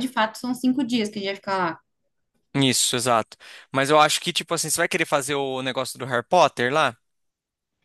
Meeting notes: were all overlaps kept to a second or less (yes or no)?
yes